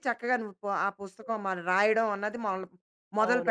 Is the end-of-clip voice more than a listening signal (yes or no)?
yes